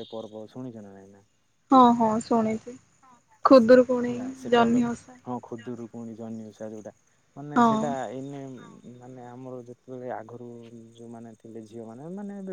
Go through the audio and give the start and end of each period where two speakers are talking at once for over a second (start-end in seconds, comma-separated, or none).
none